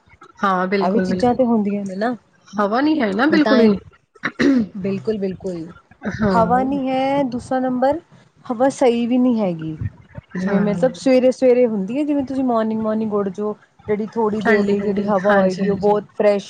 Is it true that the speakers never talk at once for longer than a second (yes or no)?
no